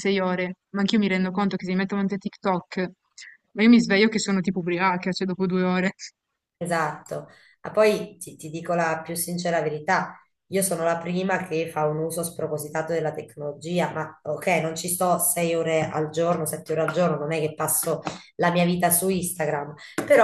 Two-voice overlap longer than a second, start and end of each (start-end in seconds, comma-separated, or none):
none